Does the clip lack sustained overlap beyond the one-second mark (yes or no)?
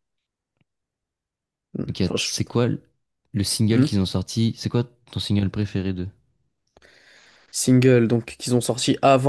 yes